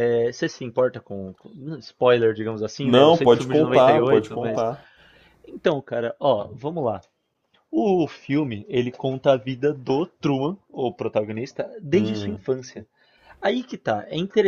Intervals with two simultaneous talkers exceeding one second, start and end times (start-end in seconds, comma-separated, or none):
2.8-4.7